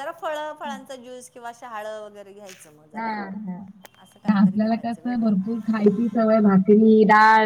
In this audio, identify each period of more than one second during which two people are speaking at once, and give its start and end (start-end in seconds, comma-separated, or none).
4.3-5.6